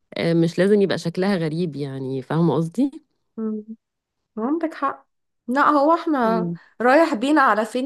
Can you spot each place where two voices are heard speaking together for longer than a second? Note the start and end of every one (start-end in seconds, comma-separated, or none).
none